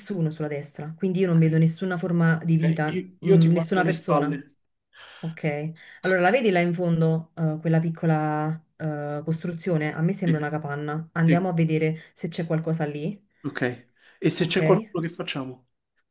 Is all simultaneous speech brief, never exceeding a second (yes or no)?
no